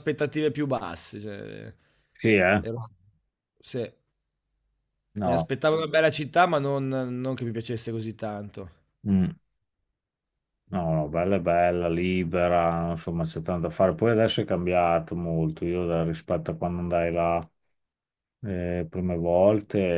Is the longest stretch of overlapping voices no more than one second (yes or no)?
yes